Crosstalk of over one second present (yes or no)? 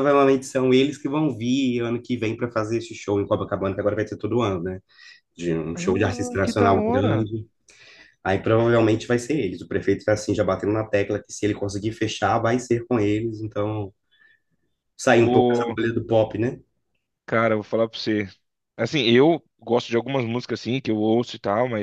yes